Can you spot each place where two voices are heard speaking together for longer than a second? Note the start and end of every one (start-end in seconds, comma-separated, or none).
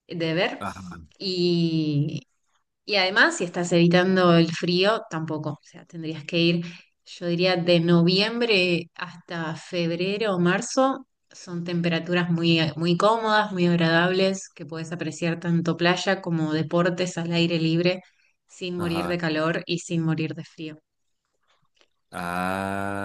none